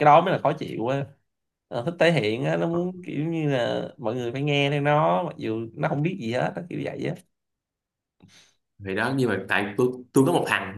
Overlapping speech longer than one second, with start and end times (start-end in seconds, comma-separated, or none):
none